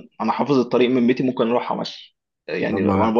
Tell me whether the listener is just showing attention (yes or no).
yes